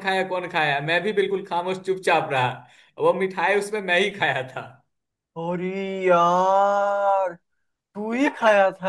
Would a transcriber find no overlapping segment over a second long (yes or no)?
yes